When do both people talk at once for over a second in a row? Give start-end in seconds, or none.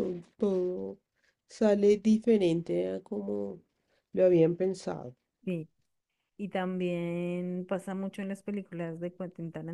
none